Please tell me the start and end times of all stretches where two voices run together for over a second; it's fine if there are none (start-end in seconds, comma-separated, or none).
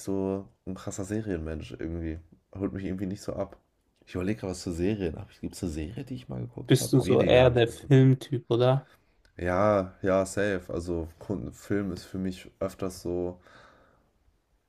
6.7-7.9